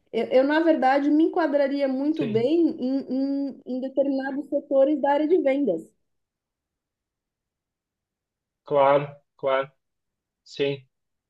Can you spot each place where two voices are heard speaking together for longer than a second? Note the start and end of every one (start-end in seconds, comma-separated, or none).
none